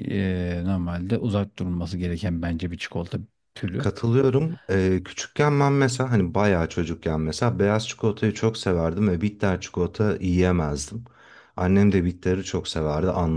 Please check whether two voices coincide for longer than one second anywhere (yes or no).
no